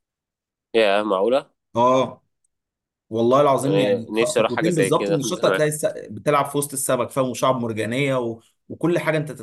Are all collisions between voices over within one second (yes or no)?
no